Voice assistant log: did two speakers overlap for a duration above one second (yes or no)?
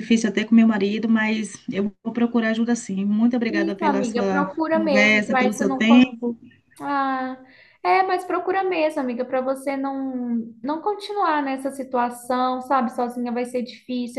yes